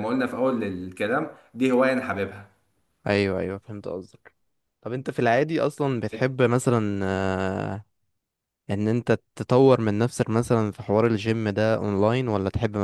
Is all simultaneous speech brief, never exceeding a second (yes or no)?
yes